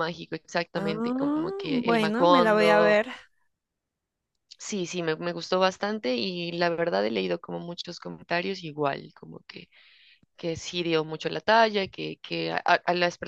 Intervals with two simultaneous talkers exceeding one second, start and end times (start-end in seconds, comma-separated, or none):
0.7-3.0